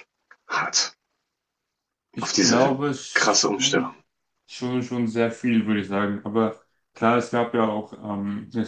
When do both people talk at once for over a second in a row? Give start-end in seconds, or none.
2.2-3.9